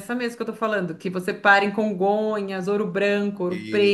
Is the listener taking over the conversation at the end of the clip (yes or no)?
no